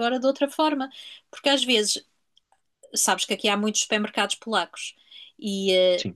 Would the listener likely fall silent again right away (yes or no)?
yes